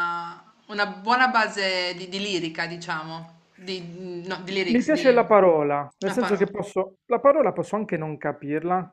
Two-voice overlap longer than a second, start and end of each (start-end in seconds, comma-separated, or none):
none